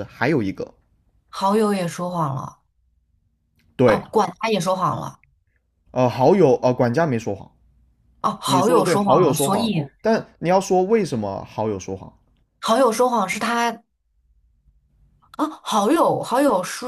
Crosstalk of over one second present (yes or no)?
yes